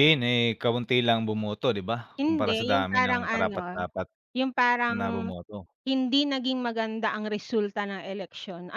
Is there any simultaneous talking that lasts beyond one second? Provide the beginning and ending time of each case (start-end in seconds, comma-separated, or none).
2.2-3.8